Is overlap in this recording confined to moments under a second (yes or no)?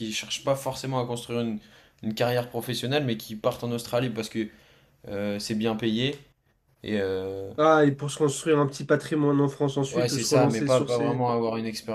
no